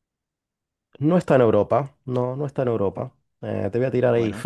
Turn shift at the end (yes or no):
no